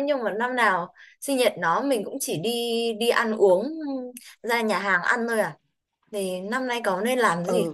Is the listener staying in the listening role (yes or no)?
no